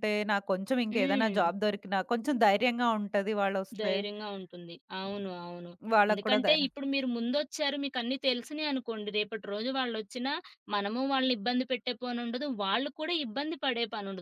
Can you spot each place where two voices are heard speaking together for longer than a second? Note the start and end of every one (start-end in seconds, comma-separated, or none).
none